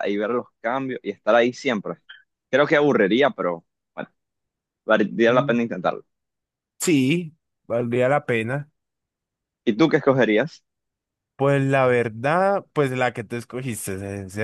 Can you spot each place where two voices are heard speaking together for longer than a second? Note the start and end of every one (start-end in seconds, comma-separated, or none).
none